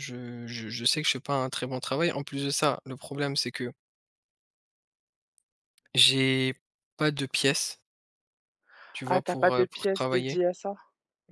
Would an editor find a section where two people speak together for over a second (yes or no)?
yes